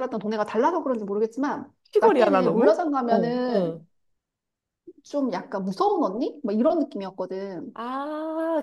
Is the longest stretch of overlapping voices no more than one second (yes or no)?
no